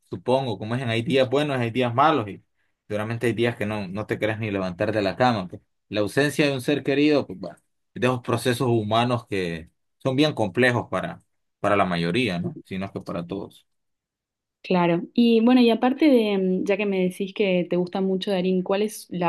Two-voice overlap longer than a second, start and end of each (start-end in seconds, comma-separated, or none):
none